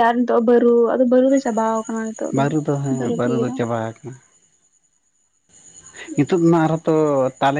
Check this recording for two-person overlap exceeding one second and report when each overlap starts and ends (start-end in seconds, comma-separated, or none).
none